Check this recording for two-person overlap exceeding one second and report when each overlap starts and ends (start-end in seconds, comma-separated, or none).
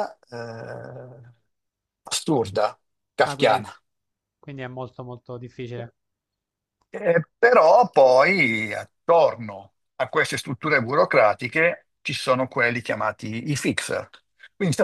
none